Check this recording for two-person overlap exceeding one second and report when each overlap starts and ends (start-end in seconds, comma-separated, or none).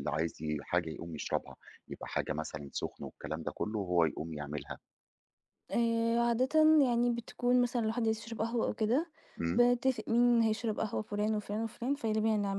none